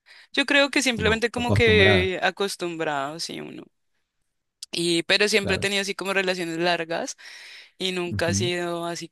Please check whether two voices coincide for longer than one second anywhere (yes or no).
yes